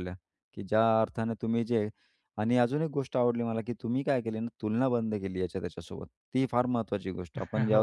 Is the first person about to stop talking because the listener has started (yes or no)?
no